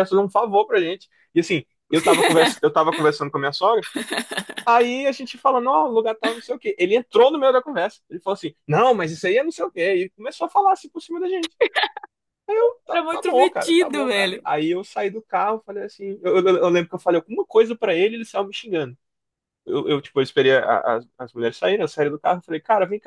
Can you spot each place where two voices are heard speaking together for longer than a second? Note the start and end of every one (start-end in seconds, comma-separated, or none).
12.9-14.5